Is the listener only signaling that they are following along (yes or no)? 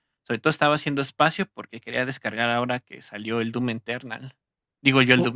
yes